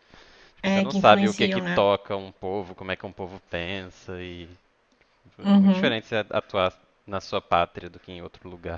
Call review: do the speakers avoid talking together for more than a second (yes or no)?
no